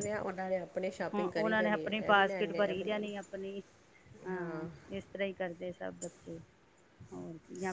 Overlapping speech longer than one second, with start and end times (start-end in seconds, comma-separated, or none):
1.1-3.3